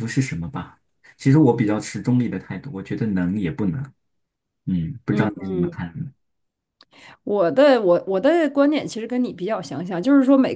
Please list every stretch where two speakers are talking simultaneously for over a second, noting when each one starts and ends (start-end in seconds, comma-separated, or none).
none